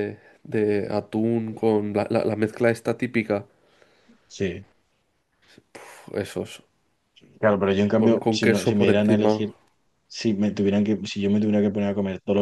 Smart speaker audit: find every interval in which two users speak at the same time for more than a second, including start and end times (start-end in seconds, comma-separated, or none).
8.0-9.3